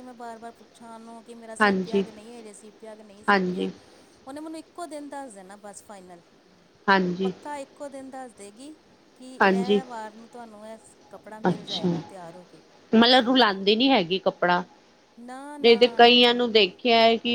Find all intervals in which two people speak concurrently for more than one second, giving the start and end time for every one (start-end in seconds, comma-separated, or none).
none